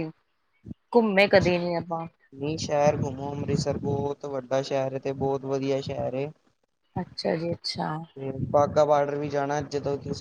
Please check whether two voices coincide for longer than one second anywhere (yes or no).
no